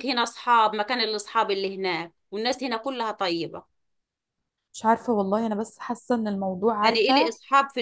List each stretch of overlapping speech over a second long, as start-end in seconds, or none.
none